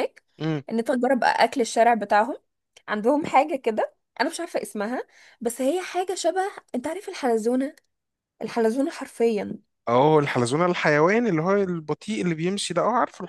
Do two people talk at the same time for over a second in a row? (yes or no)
no